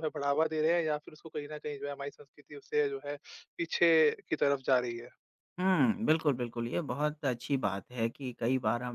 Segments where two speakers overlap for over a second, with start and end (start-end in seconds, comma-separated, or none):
none